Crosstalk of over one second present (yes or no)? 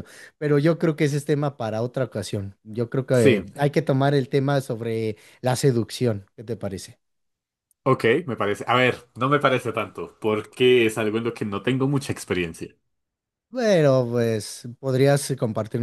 no